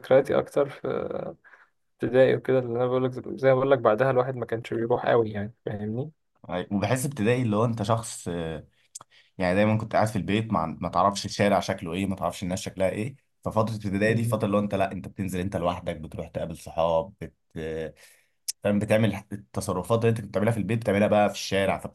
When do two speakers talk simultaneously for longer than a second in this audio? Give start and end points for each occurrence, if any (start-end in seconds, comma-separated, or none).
none